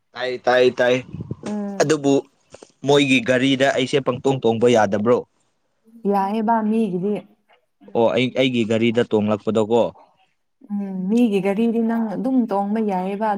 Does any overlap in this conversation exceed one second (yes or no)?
no